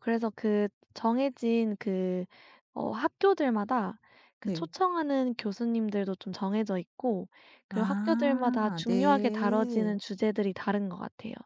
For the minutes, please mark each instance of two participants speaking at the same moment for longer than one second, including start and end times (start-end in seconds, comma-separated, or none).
7.7-10.0